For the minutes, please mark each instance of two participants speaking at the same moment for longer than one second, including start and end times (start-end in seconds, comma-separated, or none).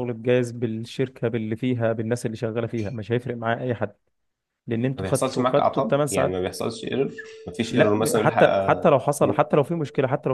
5.0-6.4, 7.7-9.4